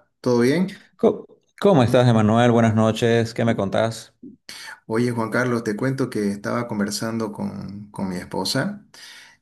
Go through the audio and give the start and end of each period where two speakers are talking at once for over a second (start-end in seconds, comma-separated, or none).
none